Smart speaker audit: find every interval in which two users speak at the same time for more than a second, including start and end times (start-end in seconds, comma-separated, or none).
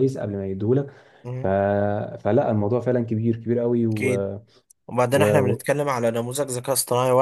none